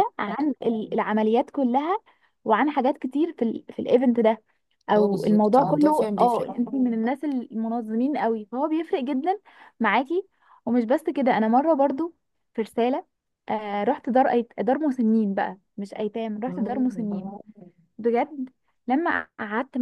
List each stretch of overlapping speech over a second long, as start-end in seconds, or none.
5.0-6.5